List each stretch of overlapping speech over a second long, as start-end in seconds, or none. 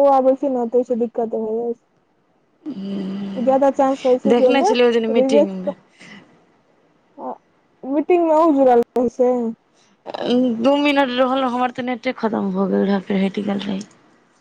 4.3-5.8